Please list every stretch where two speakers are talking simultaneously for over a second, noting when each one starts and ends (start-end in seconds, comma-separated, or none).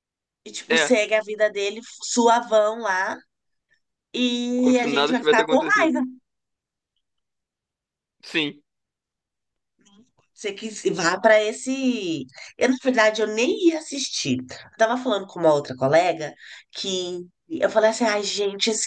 4.5-5.9